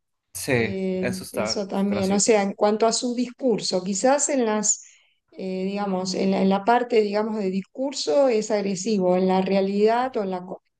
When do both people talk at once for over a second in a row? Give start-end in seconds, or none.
0.5-2.4